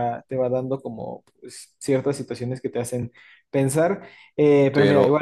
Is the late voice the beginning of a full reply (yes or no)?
yes